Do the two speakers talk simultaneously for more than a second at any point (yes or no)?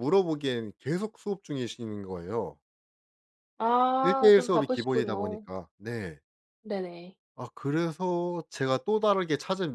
yes